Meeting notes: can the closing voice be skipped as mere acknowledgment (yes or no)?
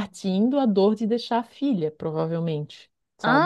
no